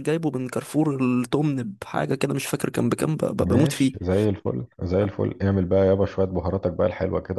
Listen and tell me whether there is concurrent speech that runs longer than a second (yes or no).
no